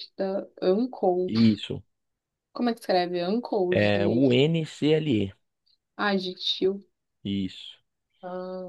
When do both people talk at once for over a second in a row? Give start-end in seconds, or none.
none